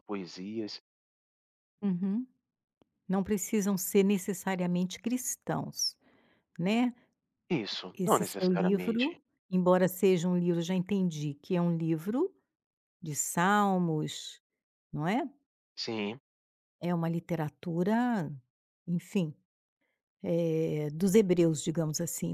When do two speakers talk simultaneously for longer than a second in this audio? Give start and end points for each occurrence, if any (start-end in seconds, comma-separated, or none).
7.9-9.2